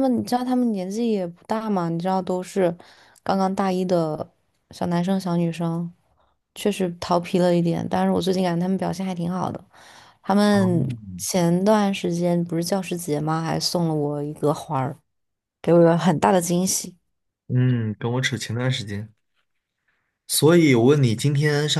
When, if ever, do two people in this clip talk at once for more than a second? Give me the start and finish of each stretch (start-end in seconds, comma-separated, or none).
none